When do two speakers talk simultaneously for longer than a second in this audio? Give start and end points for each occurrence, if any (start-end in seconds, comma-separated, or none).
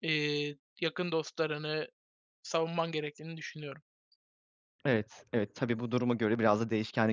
none